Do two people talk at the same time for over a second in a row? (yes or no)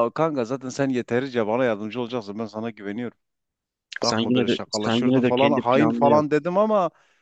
yes